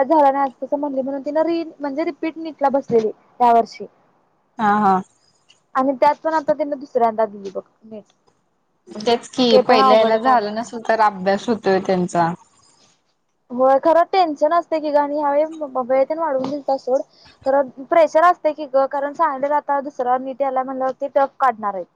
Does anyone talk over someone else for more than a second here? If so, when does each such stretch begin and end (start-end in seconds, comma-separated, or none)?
none